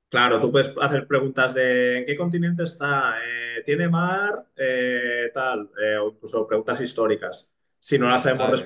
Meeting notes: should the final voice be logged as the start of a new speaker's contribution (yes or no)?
no